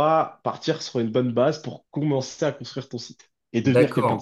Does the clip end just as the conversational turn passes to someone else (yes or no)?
yes